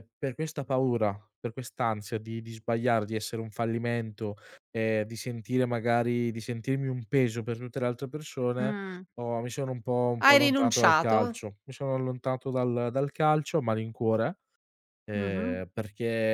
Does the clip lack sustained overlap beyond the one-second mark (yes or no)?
no